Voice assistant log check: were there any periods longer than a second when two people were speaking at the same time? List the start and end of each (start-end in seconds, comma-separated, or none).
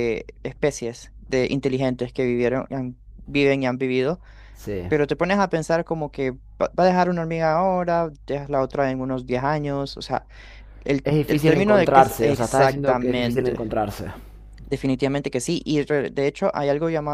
11.0-13.6